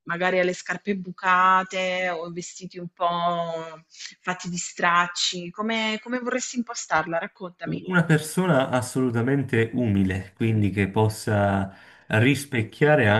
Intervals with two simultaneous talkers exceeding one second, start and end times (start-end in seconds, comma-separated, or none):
none